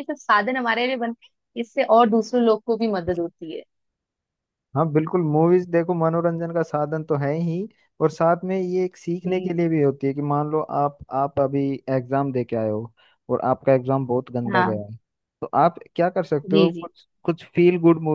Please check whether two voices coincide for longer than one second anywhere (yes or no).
no